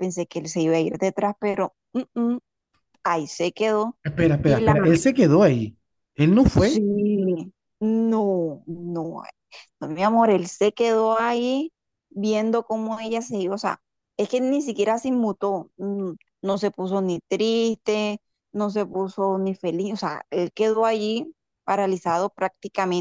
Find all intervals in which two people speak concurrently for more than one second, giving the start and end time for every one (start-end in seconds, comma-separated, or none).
none